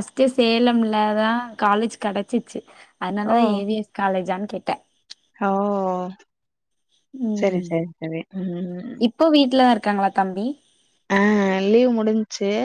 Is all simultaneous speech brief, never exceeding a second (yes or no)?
yes